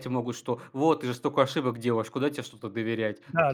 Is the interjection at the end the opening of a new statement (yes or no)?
yes